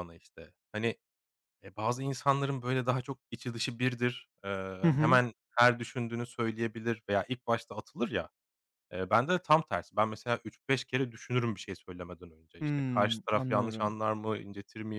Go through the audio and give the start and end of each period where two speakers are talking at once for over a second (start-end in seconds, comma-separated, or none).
12.6-13.9